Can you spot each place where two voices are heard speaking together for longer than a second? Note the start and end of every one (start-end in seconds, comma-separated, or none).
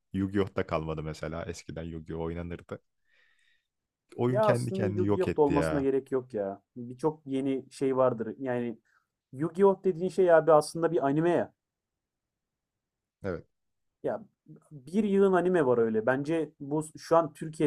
4.3-5.9